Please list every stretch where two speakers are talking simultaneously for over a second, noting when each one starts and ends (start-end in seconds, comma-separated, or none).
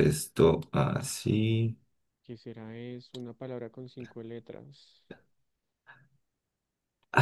none